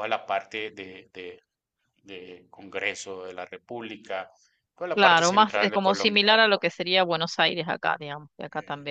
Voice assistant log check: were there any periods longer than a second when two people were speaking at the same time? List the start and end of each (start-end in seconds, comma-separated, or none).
4.9-6.3